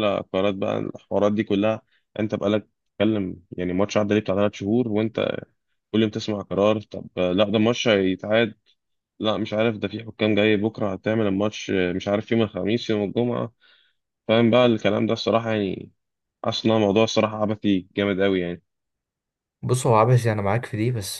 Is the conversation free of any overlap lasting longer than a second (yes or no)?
yes